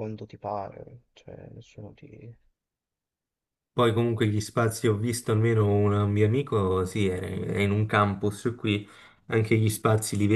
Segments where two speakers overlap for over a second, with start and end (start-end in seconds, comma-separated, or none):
none